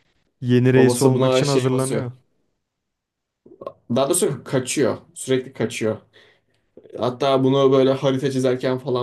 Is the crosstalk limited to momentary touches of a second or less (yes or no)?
no